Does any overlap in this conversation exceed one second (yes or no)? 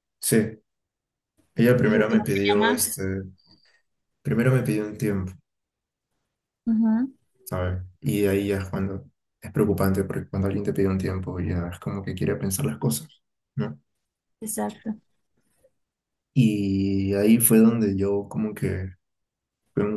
yes